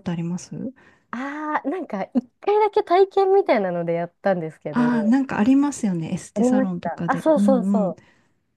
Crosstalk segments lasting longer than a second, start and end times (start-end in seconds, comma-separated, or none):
6.3-8.0